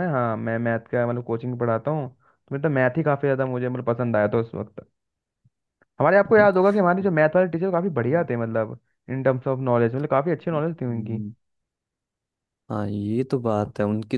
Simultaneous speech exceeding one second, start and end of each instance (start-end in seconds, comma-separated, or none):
none